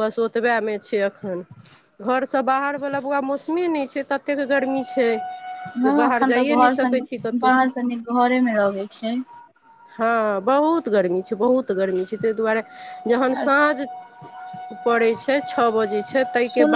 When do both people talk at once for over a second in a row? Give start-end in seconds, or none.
5.8-7.5